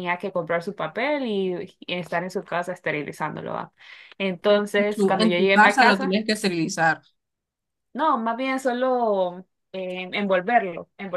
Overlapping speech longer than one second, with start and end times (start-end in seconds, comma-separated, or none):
4.8-6.1